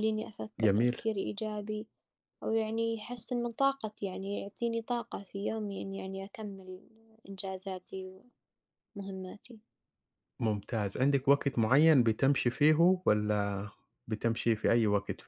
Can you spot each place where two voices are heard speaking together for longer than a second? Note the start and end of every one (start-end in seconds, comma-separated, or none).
none